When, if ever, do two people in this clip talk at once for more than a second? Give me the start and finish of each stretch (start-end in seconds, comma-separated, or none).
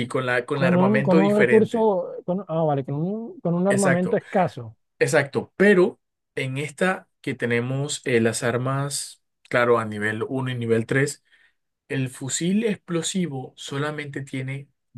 0.5-1.9